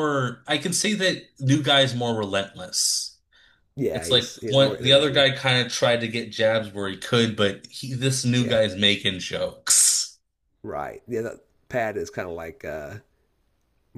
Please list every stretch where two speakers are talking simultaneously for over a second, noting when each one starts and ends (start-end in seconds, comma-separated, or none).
3.9-5.3